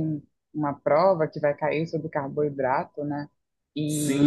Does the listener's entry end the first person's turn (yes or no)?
yes